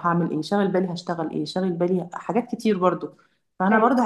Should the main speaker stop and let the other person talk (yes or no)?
no